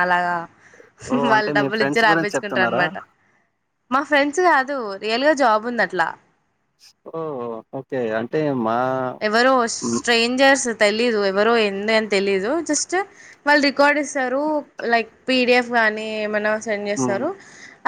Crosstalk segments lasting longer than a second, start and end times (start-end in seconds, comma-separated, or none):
1.1-2.8